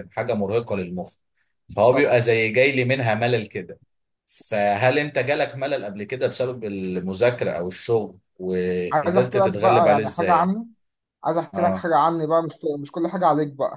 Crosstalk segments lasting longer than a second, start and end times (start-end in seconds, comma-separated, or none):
8.9-10.5